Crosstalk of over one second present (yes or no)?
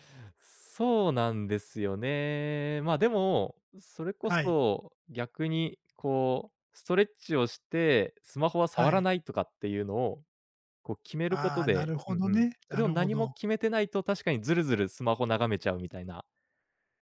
yes